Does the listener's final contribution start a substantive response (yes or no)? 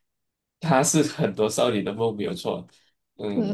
yes